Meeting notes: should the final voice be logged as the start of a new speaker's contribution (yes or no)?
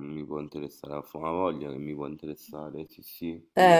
yes